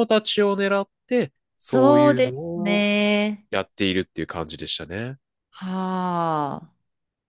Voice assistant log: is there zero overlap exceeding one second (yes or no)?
no